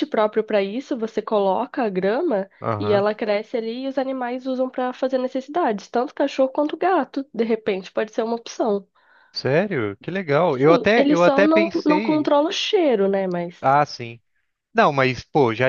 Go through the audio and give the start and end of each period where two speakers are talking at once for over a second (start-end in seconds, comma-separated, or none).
10.5-12.3